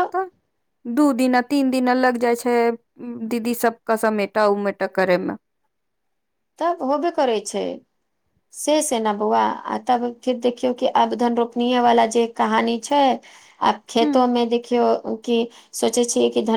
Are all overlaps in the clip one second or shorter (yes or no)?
yes